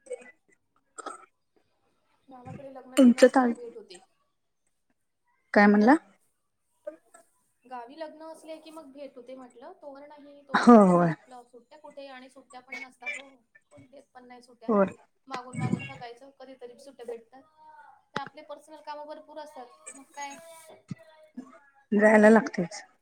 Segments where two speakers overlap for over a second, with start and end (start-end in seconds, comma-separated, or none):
none